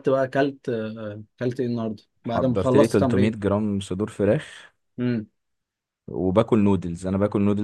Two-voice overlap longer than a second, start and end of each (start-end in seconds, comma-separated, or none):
2.2-3.4